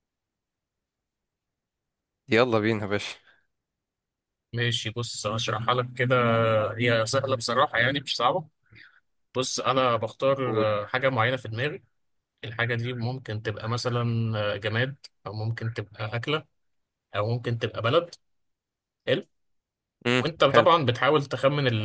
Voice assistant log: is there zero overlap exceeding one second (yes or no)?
yes